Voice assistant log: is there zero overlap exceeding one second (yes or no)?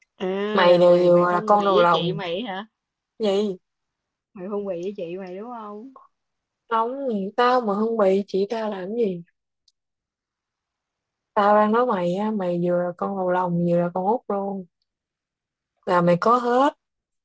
no